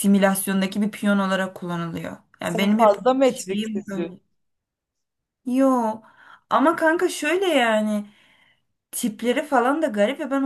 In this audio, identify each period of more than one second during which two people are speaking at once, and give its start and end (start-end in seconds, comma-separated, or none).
2.4-4.1